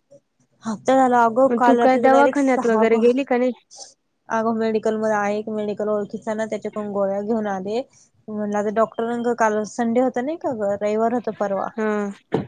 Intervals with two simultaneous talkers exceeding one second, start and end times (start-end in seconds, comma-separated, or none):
1.5-3.0